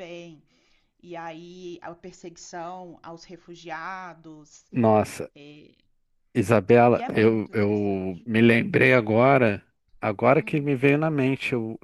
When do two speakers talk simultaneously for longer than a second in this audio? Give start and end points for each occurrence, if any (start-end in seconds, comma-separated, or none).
6.9-8.3